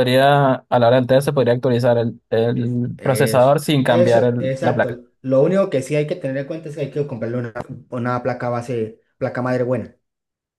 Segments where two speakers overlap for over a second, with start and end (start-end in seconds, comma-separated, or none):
3.0-5.0